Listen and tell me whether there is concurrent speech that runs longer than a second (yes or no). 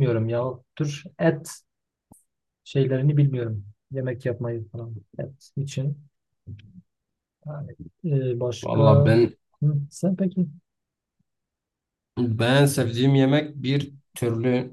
no